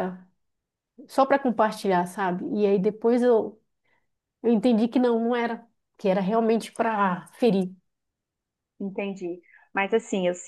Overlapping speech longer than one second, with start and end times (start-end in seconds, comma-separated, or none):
none